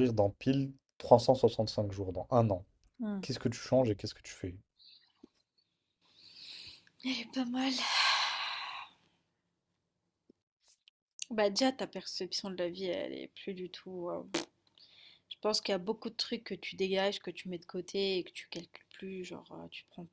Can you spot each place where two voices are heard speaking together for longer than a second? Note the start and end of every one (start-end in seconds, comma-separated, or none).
none